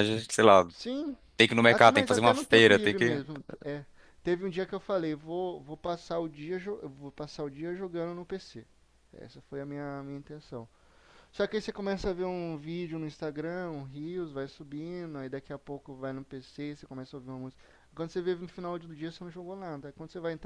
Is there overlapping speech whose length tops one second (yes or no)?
yes